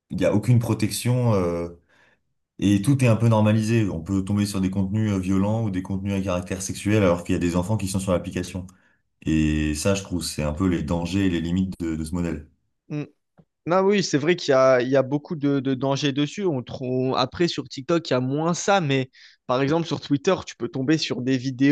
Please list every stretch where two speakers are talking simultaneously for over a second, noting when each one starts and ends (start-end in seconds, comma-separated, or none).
none